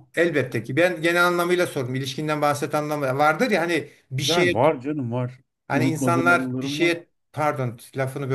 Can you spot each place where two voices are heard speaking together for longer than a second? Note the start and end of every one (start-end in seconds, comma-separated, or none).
5.7-6.9